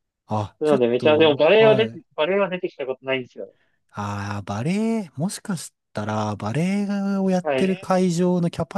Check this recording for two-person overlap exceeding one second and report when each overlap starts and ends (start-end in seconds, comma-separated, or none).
0.6-2.0